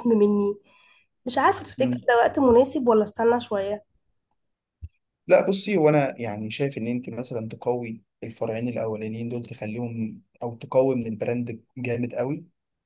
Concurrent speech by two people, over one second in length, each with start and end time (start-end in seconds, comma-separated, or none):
none